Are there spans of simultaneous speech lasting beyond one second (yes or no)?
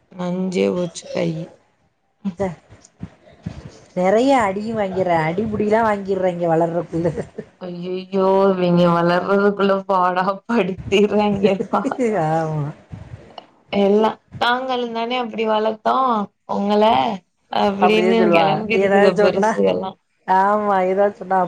yes